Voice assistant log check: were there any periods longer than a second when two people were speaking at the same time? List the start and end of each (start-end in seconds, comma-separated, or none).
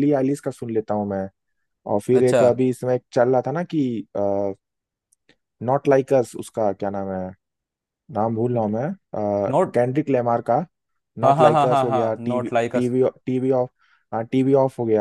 11.2-12.9